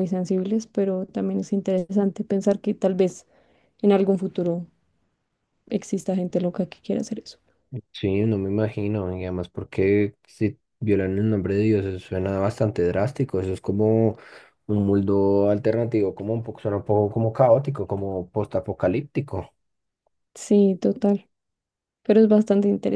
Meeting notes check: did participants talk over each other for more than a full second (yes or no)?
no